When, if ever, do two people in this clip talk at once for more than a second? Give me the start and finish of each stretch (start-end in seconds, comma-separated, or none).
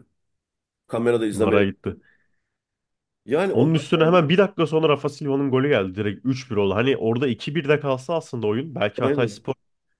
none